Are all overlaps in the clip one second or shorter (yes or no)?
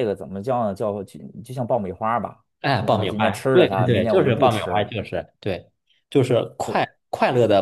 no